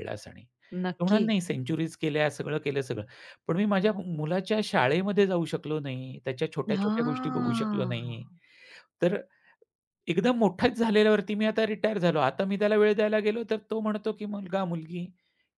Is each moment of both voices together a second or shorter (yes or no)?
no